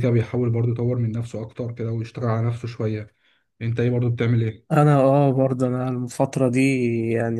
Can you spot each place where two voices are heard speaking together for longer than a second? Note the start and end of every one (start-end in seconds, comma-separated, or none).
none